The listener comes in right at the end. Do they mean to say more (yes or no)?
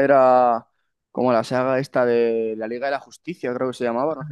yes